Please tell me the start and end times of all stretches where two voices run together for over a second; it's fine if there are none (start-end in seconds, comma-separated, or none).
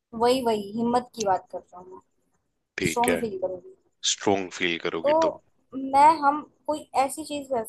none